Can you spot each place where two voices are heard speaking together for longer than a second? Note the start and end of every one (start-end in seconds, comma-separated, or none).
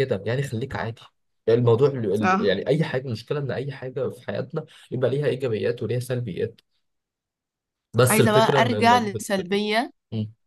8.1-9.6